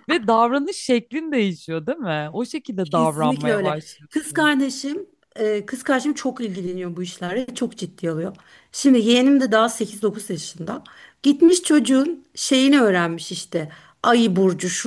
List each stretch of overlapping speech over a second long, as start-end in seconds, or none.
2.8-4.5